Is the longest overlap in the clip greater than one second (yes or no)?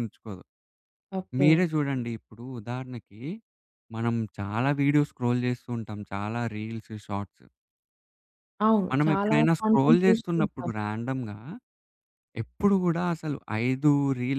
yes